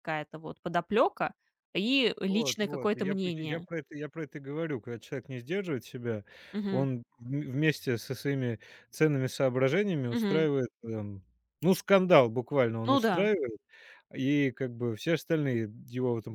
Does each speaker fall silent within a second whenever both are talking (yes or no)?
no